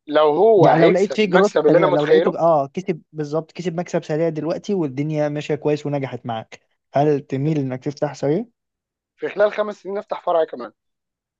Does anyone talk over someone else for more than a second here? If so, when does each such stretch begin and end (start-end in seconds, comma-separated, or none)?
0.6-2.4